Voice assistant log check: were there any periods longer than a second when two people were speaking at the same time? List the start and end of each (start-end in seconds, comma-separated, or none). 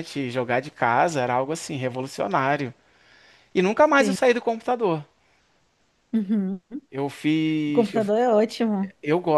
none